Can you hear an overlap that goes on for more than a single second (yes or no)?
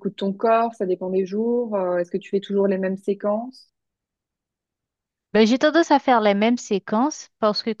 no